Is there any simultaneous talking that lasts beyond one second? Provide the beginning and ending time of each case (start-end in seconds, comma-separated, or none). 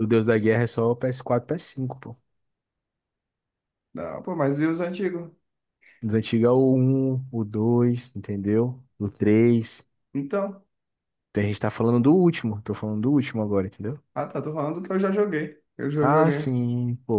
none